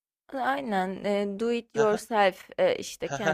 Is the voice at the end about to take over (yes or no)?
yes